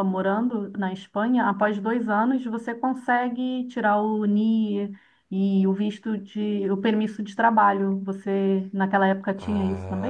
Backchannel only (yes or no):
no